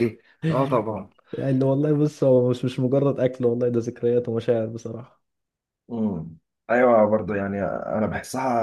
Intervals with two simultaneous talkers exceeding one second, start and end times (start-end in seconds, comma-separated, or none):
none